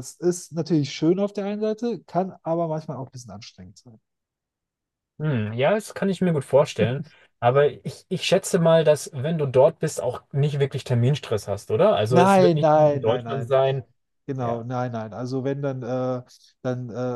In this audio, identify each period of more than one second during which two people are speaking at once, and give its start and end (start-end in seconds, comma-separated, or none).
12.1-13.6